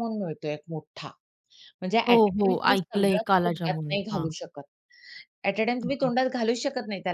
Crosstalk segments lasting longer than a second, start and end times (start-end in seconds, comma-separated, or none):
2.1-4.3